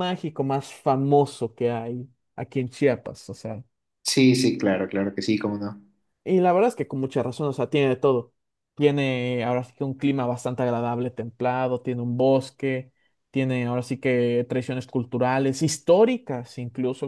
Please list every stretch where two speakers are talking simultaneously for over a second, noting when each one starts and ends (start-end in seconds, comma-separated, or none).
none